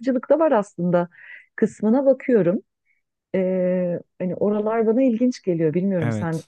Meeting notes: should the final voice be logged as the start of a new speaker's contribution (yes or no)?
yes